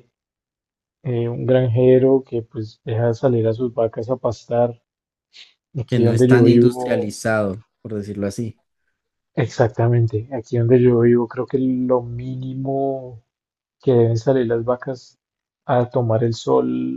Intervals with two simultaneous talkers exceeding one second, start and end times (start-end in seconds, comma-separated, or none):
5.8-7.2